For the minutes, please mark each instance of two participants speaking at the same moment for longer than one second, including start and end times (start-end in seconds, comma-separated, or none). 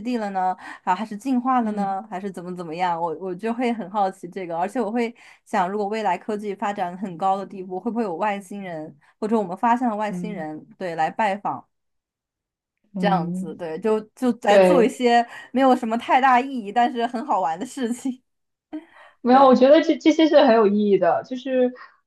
none